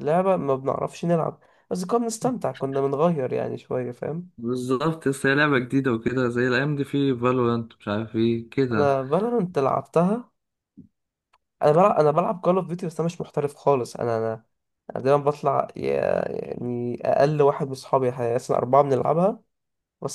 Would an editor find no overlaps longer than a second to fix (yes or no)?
yes